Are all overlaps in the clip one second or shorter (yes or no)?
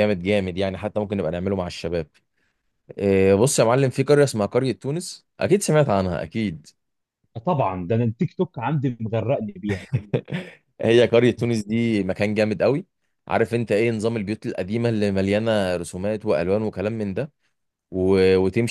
yes